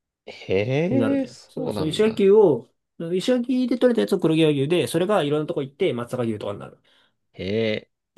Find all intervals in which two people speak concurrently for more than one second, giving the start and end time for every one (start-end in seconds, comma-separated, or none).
0.9-2.3